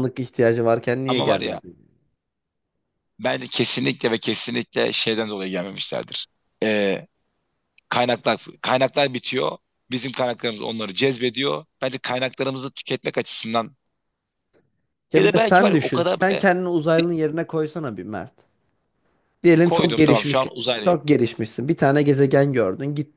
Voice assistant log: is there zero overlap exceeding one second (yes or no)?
no